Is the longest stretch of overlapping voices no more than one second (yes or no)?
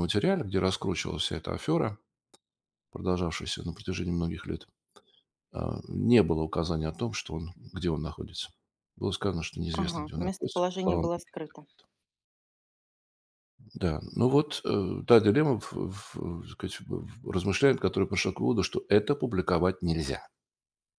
no